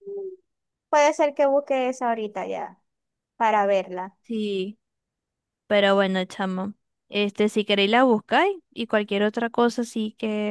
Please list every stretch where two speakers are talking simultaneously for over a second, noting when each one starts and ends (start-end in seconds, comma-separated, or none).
none